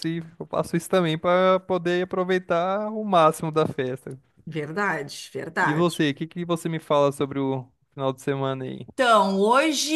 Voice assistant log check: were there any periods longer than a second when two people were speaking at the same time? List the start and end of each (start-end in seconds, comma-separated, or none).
none